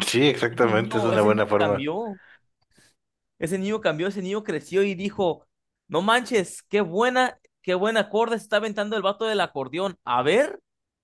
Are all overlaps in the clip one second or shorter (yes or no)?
no